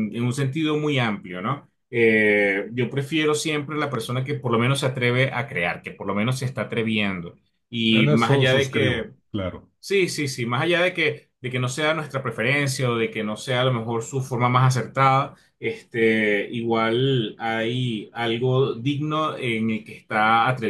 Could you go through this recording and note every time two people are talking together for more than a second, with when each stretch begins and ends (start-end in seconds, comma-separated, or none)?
7.9-9.1